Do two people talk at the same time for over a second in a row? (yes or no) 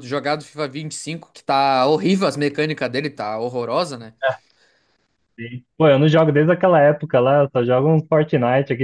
no